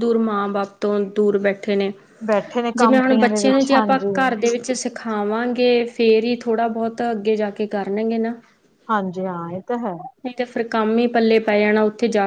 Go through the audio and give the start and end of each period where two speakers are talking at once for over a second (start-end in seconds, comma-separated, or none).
2.8-4.1